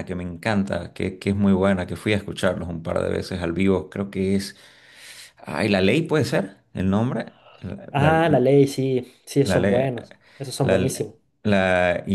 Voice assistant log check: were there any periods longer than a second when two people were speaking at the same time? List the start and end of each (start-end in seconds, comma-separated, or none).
none